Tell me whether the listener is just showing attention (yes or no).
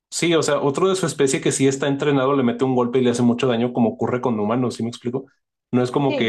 yes